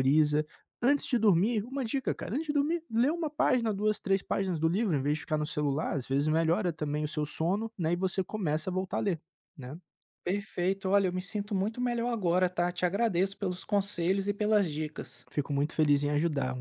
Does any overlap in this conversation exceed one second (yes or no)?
no